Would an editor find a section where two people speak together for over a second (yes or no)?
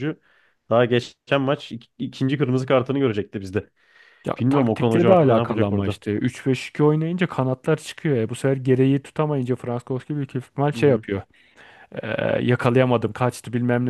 yes